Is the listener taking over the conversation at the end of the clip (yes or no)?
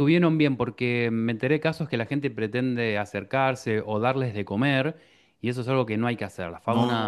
no